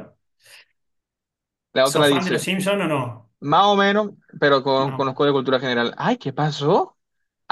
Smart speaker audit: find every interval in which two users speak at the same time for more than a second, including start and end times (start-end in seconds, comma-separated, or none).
none